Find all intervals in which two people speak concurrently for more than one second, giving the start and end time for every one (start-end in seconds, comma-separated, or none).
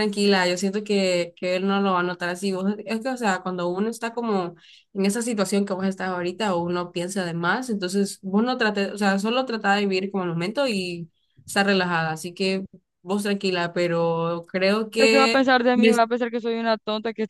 none